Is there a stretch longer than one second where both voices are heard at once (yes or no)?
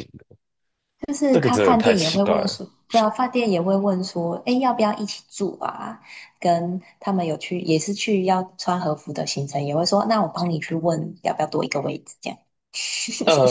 yes